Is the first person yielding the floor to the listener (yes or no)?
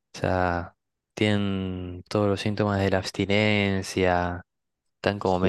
no